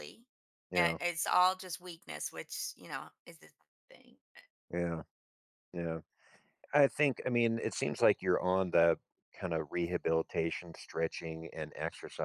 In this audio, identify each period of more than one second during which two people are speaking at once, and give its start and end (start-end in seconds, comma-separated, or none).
none